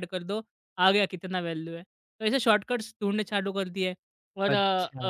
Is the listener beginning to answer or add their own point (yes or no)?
yes